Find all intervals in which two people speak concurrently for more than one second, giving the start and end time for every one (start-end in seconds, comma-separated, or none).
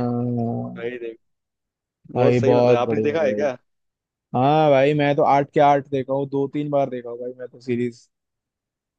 2.1-3.4